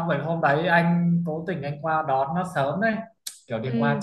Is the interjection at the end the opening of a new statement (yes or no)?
no